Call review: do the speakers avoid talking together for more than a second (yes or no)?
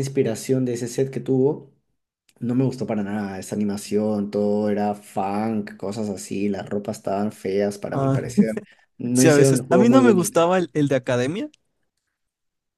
no